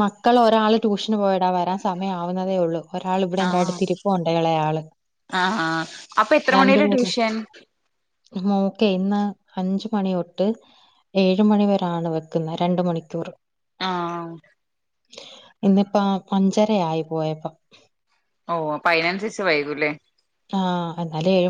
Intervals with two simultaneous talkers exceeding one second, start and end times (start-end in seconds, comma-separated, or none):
none